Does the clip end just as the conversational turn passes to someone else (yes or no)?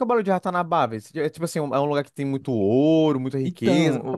yes